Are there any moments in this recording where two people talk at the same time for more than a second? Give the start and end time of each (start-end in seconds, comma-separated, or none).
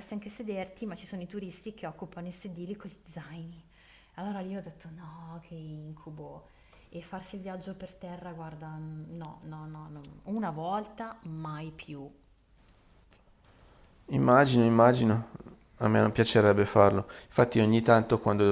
none